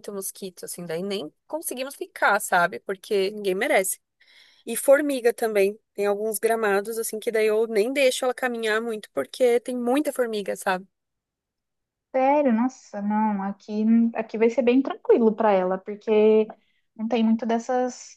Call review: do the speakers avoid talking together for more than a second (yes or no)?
yes